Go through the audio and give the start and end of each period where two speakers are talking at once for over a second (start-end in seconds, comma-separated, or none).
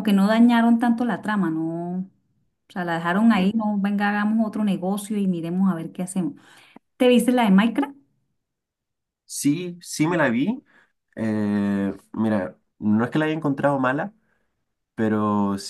none